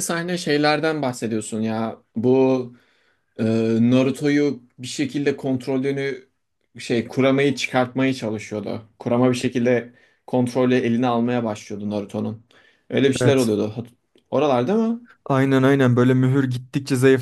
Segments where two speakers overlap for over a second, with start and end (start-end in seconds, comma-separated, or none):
none